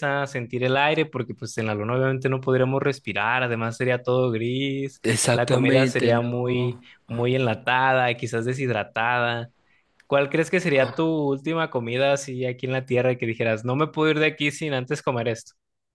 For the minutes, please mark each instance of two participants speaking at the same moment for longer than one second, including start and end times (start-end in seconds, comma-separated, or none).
5.0-6.8